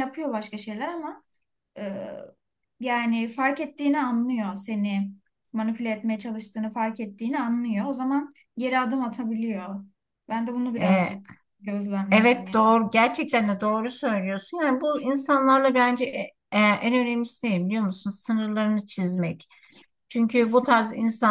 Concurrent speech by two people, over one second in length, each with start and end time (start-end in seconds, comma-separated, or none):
none